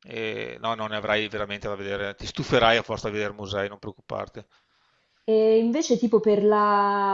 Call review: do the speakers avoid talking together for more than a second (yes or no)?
yes